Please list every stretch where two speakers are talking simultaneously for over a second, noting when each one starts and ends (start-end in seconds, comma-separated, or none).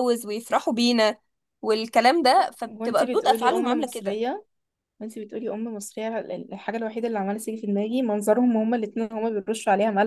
2.6-4.2